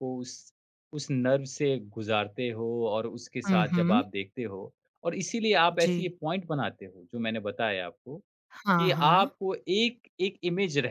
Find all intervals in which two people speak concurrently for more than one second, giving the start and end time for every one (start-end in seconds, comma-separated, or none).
none